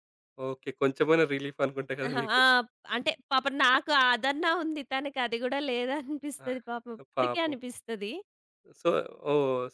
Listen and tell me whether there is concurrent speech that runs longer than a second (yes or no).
no